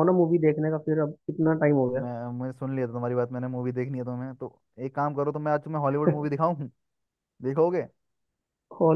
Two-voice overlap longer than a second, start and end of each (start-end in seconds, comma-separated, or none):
none